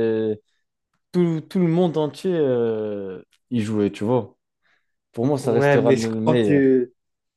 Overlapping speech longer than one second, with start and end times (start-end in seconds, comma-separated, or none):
5.4-6.7